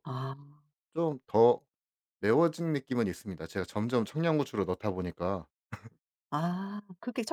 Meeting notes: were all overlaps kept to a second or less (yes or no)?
yes